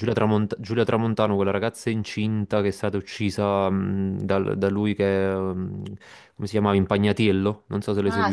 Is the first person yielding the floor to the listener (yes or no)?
yes